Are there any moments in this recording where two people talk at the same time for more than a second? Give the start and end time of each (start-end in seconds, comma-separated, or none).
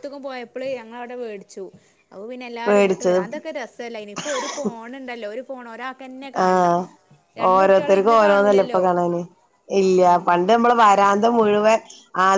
7.5-8.8